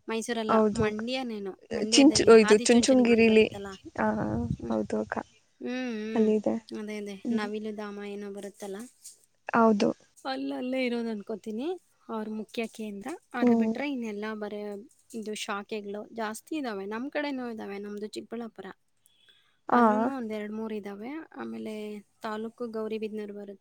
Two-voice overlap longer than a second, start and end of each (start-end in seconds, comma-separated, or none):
1.9-3.4